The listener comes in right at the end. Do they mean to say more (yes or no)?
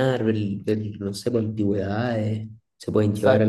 no